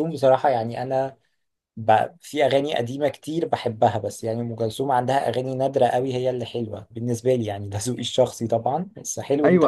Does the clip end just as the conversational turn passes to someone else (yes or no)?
yes